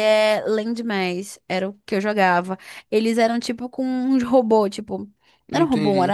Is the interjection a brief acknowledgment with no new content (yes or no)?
yes